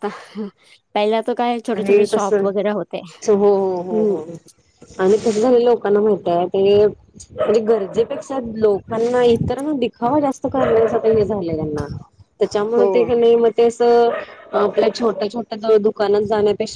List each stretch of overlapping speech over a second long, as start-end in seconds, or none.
1.8-3.0